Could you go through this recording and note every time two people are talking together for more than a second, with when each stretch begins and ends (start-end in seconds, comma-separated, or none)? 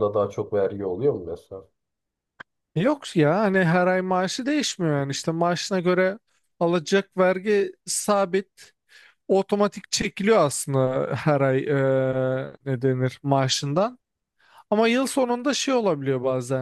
none